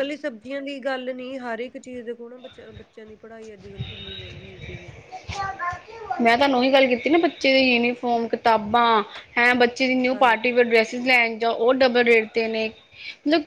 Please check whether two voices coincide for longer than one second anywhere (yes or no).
no